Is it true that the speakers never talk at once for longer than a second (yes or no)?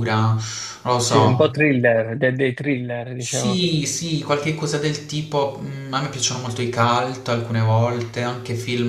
yes